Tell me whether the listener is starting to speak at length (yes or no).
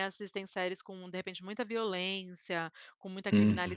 no